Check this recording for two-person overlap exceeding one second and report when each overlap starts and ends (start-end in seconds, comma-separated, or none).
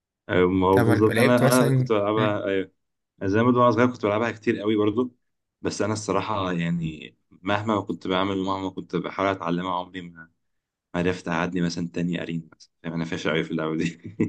0.7-2.4